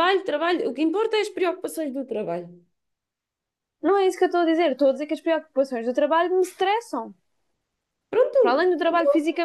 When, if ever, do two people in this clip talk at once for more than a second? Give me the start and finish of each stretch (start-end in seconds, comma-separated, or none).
none